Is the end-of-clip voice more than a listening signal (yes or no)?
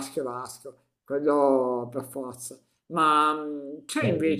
no